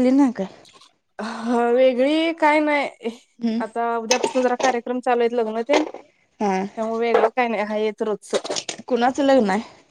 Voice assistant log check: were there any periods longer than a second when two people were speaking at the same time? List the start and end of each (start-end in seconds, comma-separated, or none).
none